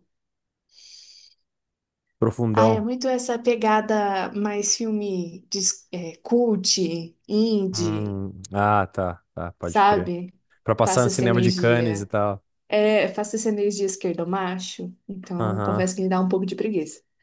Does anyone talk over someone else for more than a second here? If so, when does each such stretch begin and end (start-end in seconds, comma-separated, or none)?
10.8-12.1